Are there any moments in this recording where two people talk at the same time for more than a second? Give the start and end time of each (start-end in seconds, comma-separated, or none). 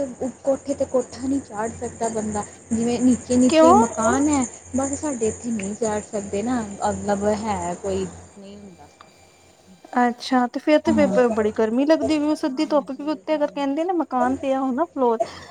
12.3-14.0